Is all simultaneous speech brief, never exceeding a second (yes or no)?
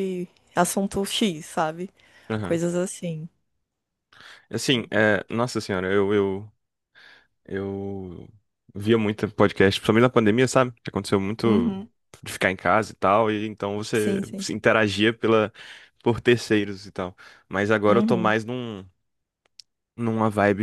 yes